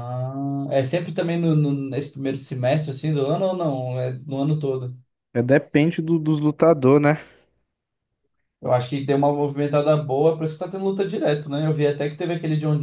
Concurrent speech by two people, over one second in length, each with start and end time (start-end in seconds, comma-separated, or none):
none